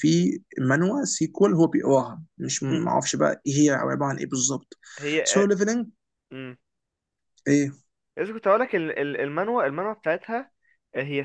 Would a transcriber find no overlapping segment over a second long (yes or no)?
yes